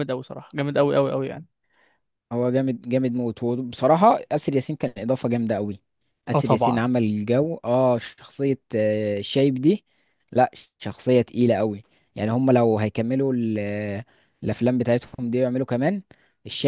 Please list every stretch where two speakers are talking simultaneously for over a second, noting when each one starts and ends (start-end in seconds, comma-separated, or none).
none